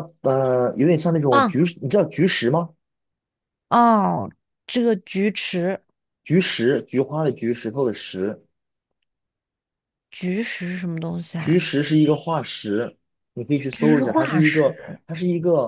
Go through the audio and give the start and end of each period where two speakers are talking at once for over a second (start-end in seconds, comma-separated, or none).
13.7-15.0